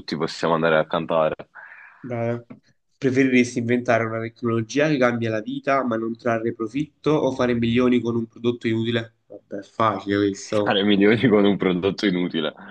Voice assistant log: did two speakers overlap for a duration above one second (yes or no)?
no